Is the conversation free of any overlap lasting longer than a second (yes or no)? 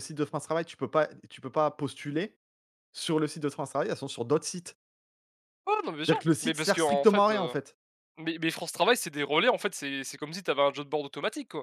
no